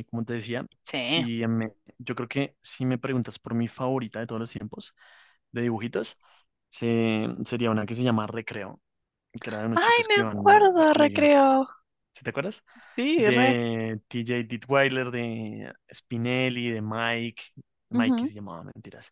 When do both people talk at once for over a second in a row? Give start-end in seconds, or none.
9.7-11.3